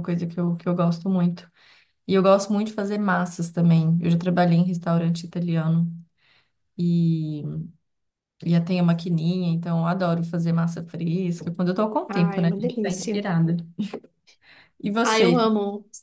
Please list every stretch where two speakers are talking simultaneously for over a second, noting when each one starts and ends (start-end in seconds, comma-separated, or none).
12.1-13.3